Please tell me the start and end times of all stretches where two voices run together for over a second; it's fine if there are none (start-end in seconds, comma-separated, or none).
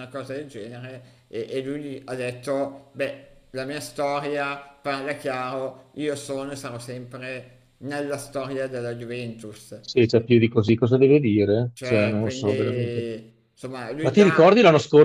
11.7-13.1